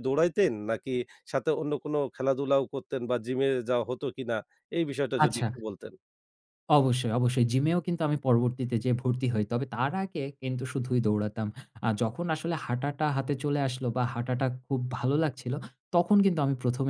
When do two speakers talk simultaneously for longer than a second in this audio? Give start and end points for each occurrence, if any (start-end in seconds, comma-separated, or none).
none